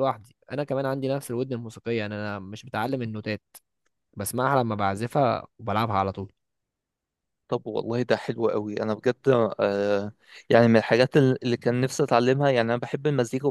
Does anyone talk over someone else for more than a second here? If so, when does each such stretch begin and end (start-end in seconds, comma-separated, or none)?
none